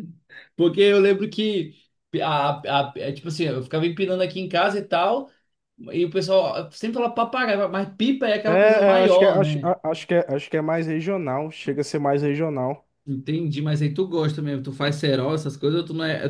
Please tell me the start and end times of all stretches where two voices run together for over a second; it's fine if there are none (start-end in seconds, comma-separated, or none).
8.5-9.7